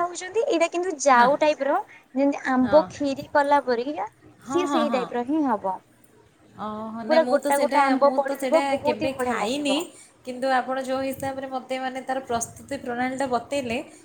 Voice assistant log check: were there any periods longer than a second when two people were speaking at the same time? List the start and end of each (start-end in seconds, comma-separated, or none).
7.1-9.8